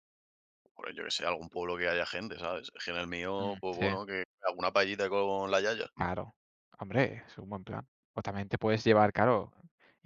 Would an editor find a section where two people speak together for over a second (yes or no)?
no